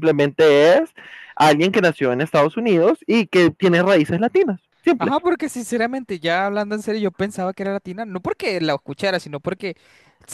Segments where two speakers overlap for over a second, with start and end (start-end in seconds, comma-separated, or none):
none